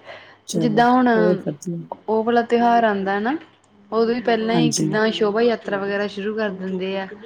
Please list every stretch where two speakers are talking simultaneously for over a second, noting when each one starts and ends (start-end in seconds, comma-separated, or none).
none